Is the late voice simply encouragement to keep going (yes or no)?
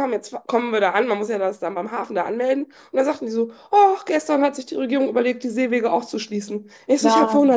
yes